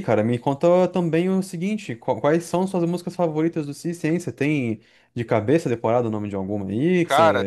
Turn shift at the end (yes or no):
yes